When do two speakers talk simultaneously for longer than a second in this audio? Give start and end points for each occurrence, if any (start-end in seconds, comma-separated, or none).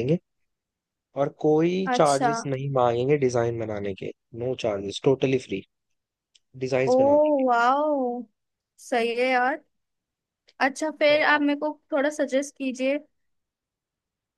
none